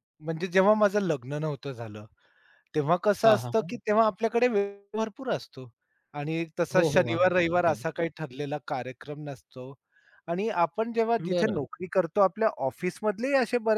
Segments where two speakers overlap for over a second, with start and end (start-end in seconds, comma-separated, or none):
6.7-8.0